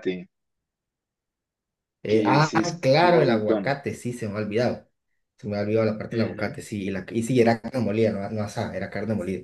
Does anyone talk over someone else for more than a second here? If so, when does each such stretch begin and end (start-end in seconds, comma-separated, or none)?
2.1-3.8